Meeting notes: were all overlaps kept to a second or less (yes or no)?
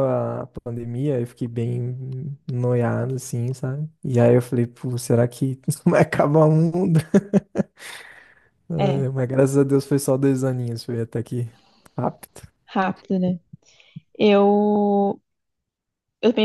yes